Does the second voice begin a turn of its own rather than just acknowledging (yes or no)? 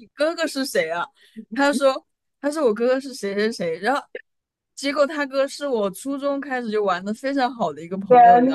yes